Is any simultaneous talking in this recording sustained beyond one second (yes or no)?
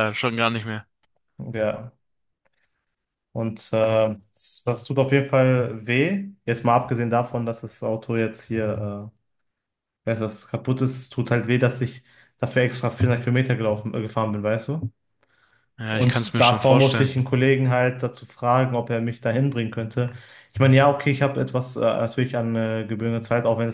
yes